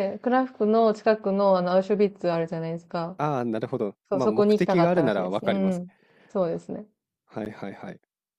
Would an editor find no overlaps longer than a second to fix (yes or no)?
no